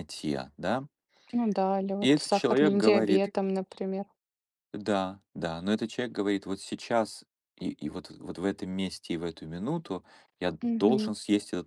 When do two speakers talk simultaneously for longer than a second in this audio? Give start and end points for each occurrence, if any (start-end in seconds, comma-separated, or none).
2.0-3.3